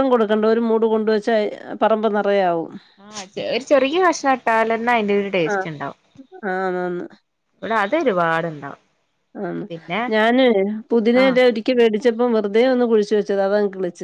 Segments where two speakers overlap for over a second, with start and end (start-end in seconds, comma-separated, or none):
none